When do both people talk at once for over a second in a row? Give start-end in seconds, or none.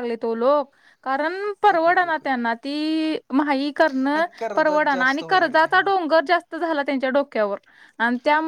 4.1-5.9